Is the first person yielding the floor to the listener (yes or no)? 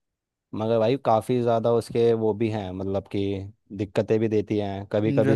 no